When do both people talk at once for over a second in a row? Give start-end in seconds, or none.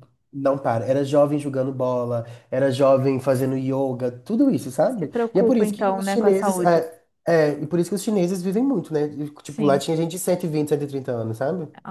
4.9-6.8